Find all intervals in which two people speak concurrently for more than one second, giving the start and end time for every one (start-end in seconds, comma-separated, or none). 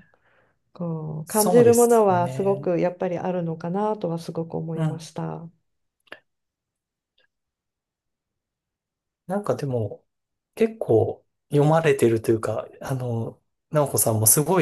1.2-2.7